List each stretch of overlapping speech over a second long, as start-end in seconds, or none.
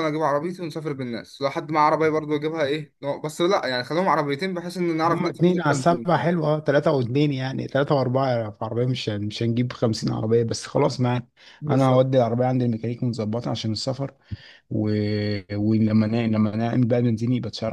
5.1-6.3